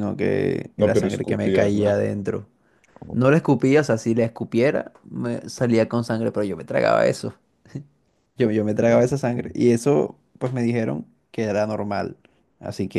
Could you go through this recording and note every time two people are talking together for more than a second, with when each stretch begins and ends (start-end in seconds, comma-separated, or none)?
0.8-2.0